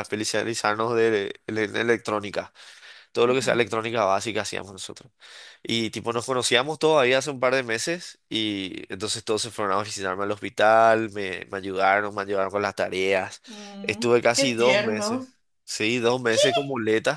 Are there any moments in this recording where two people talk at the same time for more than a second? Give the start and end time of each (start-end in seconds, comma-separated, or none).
13.8-15.3